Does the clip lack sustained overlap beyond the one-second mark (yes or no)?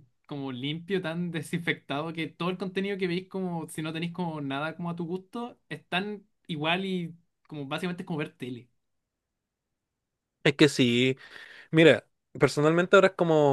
yes